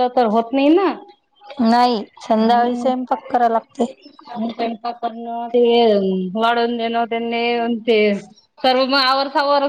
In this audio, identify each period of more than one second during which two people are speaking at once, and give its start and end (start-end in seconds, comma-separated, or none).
none